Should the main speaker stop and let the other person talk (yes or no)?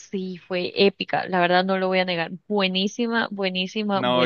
yes